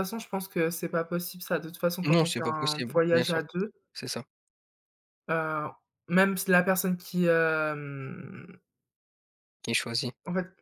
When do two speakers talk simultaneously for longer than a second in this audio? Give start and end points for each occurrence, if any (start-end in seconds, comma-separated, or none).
2.1-3.4